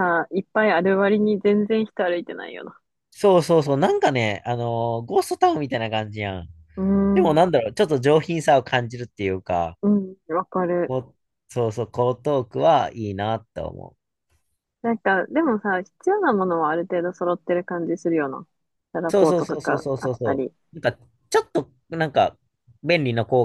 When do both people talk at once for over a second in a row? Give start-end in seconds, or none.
19.1-20.5